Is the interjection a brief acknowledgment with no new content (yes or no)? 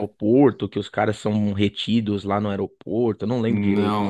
no